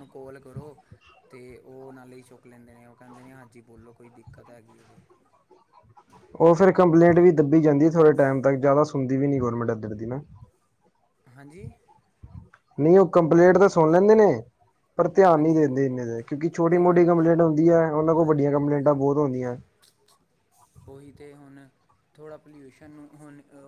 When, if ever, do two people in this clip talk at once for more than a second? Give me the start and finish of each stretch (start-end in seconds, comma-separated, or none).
none